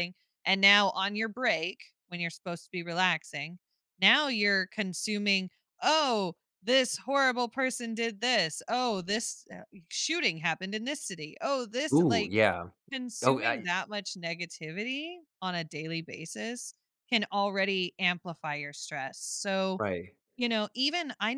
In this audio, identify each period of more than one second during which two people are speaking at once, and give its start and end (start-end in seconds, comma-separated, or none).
none